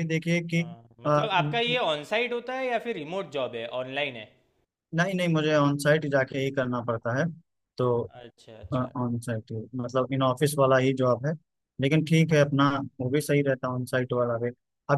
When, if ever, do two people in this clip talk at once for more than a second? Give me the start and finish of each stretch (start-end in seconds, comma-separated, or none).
none